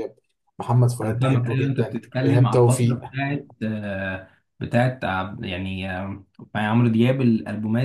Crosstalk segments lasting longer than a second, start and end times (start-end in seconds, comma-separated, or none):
1.0-3.0